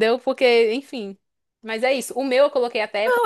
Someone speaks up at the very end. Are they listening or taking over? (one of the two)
taking over